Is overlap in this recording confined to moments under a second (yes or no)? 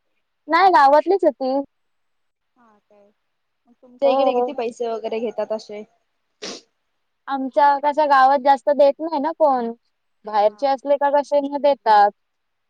yes